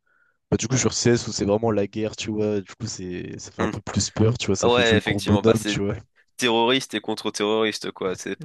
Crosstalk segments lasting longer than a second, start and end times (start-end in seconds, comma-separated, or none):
4.6-5.8